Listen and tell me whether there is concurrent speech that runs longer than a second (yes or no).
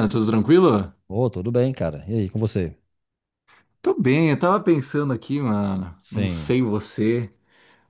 no